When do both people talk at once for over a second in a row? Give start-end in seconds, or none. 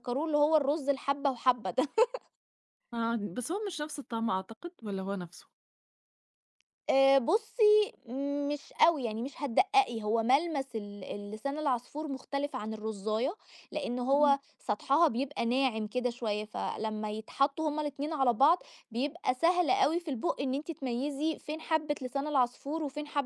none